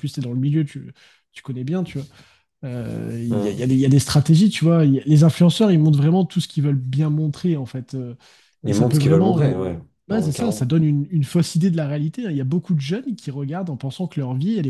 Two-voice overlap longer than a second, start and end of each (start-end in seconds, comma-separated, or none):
8.7-10.7